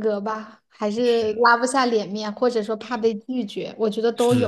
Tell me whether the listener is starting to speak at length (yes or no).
yes